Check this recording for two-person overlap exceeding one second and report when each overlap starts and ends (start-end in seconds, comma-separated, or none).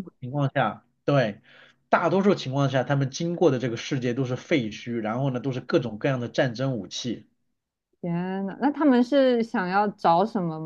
none